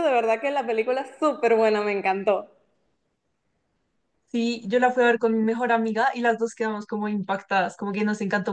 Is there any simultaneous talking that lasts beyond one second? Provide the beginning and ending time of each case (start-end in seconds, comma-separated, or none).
none